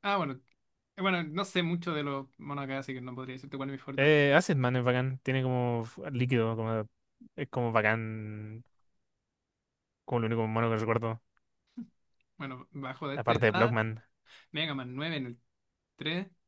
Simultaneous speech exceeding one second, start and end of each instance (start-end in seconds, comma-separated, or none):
none